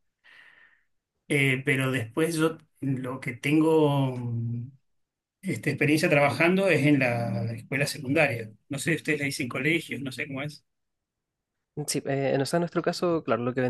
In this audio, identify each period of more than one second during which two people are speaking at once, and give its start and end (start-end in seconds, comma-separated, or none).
none